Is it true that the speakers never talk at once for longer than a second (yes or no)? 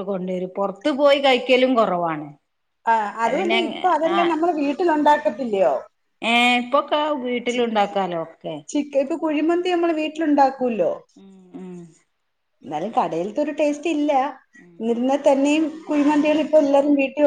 yes